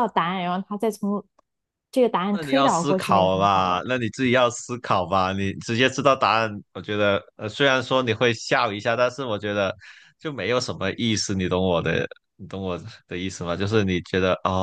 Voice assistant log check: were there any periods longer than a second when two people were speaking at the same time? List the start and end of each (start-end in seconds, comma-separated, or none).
2.3-3.8